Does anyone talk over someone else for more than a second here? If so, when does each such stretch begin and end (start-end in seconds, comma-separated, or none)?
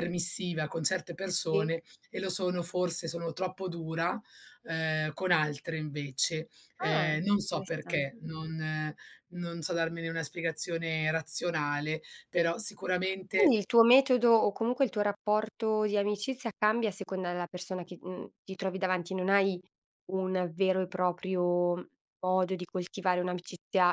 6.8-8.1